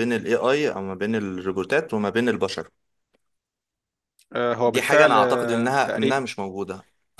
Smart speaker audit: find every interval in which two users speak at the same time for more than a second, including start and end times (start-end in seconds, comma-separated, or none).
4.7-6.2